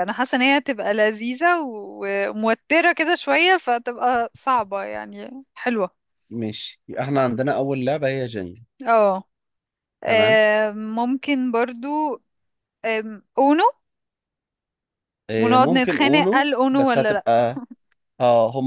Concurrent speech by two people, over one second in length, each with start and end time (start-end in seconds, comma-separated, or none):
15.4-17.2